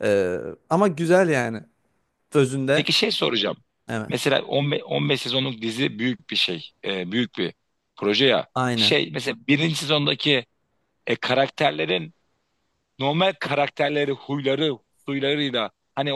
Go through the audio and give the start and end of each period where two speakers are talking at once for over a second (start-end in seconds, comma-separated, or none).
none